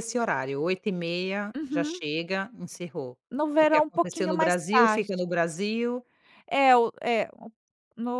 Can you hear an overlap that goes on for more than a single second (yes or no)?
yes